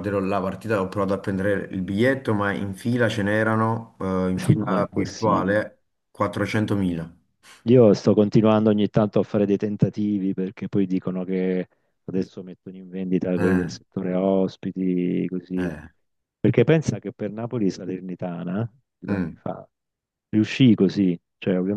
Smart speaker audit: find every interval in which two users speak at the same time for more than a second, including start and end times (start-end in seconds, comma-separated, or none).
4.3-5.5